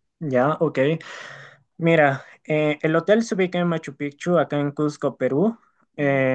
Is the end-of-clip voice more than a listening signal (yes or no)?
no